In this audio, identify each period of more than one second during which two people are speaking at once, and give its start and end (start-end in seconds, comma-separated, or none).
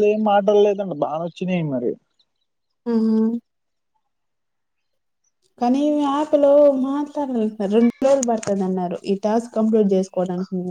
none